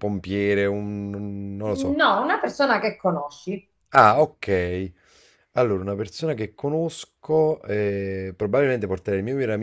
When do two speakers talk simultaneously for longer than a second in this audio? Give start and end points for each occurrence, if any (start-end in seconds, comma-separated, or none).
none